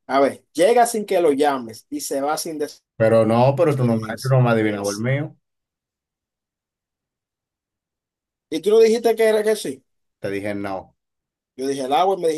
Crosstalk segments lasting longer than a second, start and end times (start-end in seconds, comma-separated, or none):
3.7-5.1